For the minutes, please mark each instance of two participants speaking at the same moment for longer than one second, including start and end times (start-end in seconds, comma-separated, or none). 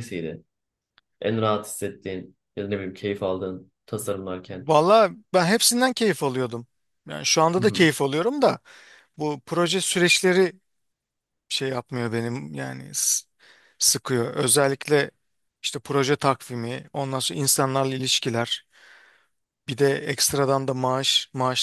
none